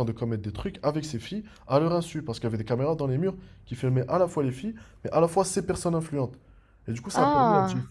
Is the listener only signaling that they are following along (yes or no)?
yes